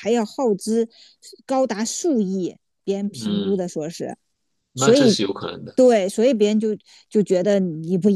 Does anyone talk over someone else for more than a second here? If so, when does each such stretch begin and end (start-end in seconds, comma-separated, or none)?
none